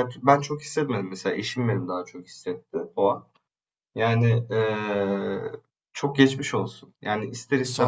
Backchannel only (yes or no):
yes